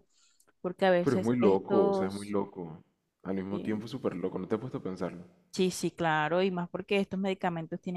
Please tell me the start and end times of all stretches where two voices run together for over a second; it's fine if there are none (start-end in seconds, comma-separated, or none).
1.0-2.4